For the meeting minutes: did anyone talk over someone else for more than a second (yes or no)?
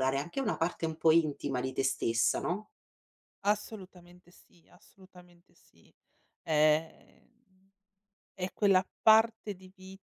no